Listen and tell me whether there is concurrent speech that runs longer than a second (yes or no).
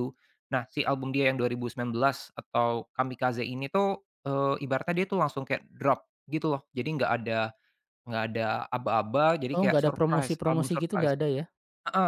yes